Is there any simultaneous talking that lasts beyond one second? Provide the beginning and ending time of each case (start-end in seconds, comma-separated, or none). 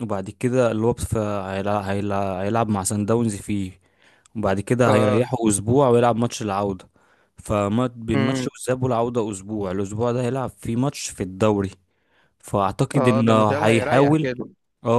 12.9-14.3